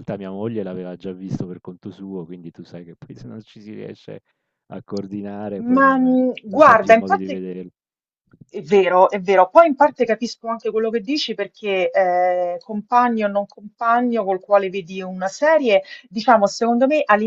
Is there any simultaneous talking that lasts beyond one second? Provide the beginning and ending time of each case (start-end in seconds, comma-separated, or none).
5.7-7.4